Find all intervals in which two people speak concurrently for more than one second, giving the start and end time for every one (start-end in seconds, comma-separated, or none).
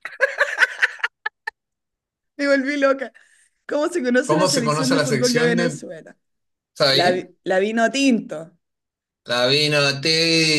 4.2-5.8